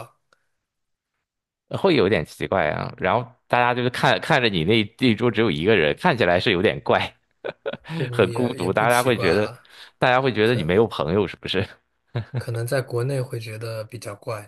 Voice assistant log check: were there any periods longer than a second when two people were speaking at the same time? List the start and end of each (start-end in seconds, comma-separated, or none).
8.1-9.6